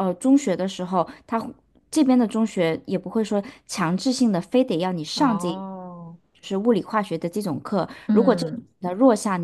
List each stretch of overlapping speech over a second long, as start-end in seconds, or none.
none